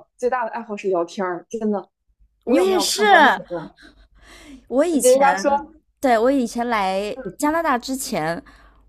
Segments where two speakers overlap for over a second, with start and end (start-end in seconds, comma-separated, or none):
none